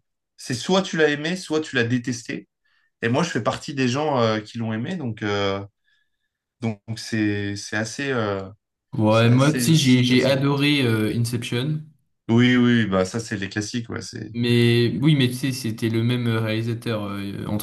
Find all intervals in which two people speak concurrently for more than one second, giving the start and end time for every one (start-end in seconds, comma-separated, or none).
9.1-10.4